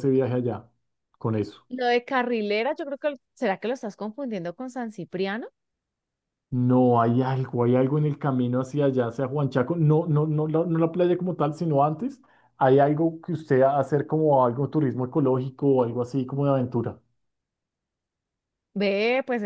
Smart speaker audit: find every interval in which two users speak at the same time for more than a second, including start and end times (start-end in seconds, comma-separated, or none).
none